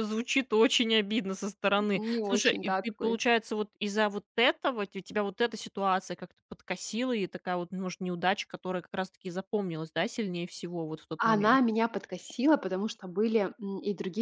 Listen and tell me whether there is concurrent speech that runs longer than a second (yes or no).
yes